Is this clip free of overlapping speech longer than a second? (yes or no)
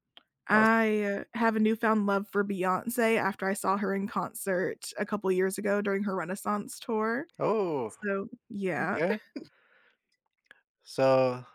yes